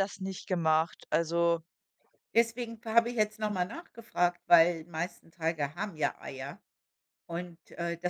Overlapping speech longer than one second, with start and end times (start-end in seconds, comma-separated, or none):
none